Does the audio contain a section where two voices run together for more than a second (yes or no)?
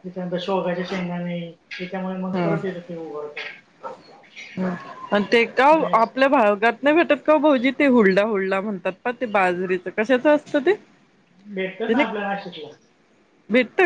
no